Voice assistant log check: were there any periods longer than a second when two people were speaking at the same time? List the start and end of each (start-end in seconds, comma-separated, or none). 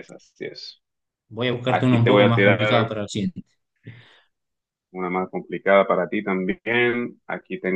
1.7-2.9